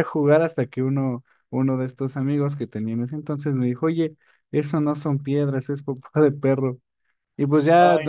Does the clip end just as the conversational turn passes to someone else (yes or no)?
no